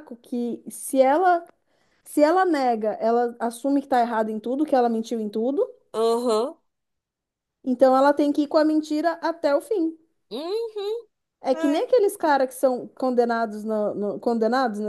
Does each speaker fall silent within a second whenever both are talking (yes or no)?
yes